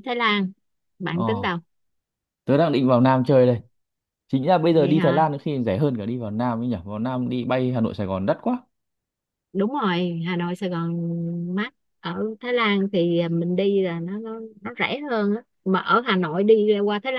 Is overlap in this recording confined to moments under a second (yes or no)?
yes